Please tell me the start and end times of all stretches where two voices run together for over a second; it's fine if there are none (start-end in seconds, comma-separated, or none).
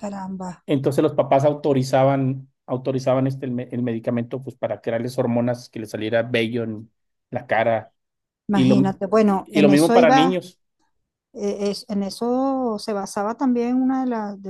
8.5-10.4